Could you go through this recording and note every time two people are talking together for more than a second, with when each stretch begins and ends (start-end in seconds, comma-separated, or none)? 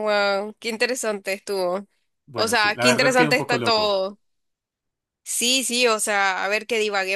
2.4-4.0